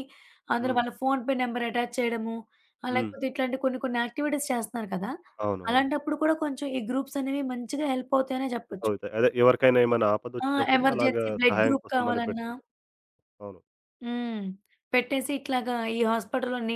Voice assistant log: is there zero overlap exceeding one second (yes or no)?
no